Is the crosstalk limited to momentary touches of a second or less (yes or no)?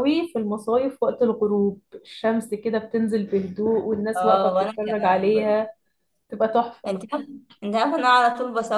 no